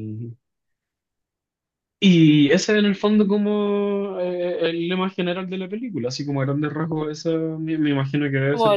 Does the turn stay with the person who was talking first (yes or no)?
no